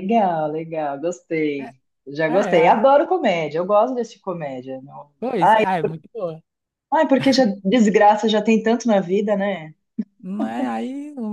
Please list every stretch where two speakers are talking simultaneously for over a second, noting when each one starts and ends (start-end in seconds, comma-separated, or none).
none